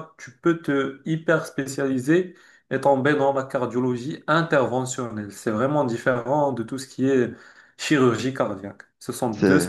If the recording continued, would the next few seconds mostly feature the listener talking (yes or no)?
no